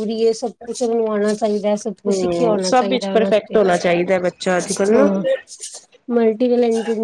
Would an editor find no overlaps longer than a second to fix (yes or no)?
no